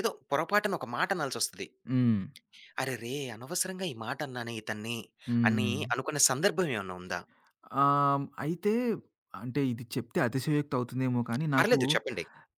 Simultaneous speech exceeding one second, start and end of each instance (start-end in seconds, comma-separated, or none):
none